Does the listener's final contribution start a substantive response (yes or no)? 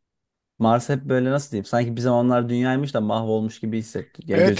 yes